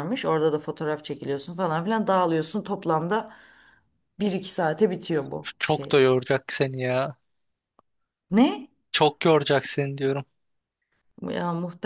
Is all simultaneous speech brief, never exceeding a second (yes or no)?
yes